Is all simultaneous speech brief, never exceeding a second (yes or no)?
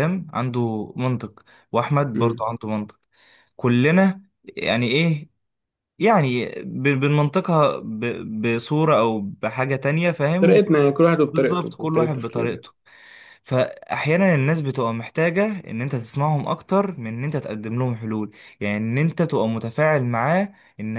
no